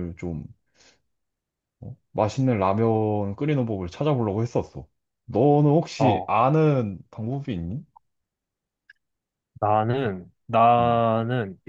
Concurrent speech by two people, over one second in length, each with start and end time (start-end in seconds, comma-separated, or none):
none